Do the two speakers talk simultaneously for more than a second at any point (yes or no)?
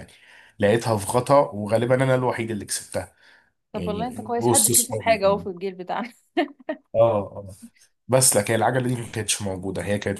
yes